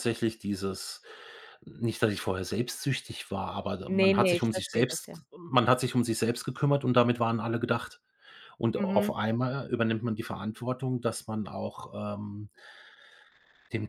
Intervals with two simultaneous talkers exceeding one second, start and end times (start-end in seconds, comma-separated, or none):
3.9-5.2